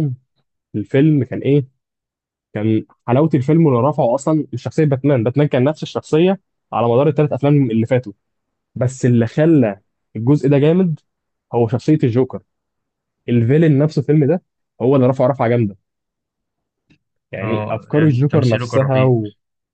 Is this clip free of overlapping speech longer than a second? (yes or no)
no